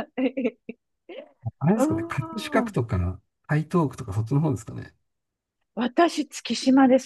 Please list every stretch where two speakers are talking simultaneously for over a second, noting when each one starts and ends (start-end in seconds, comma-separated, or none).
none